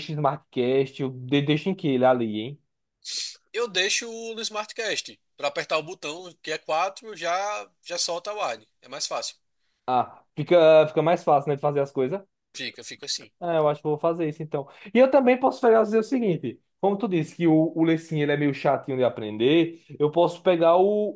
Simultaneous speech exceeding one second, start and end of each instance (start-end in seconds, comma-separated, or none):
none